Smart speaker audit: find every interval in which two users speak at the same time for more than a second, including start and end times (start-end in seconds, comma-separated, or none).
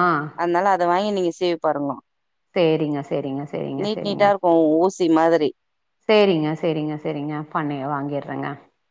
none